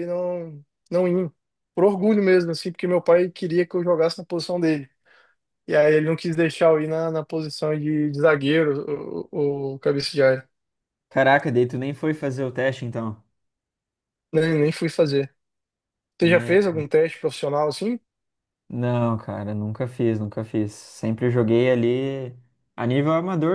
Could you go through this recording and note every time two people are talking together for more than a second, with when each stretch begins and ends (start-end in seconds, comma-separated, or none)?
none